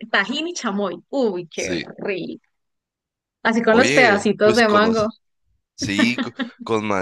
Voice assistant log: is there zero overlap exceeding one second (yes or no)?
no